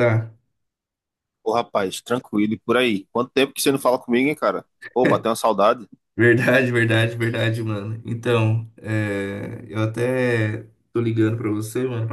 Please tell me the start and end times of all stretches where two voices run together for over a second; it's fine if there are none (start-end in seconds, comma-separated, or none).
none